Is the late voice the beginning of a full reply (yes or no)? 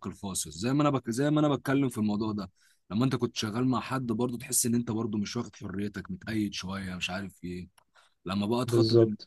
no